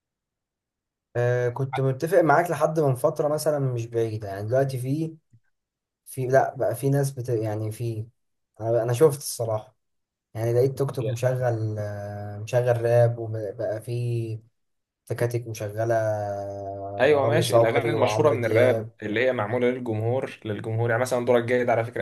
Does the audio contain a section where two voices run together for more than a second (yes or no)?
yes